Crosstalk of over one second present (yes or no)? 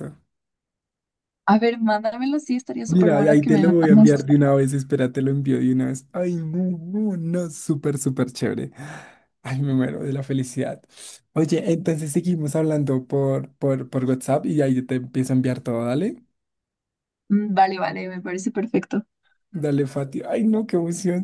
yes